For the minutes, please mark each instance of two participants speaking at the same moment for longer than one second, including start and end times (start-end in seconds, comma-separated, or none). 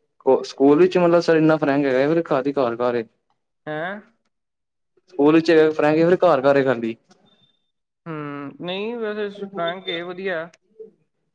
none